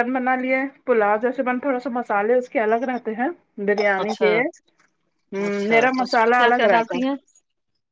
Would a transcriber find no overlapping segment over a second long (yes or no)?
no